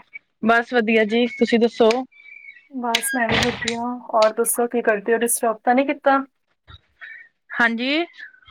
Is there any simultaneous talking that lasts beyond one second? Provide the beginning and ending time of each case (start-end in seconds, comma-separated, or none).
none